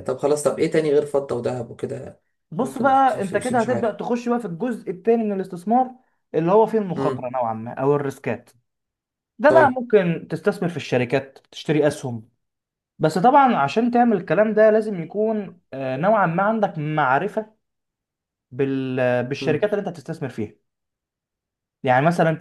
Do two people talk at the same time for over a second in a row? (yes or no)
yes